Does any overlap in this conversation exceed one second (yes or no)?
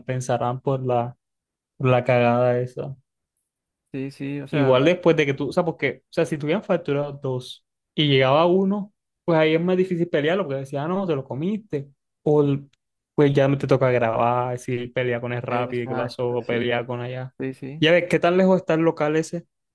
yes